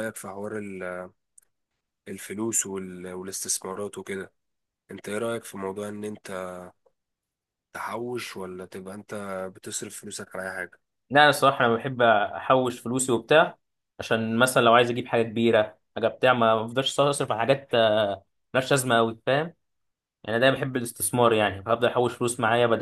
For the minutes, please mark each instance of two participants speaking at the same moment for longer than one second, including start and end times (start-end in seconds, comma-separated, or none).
none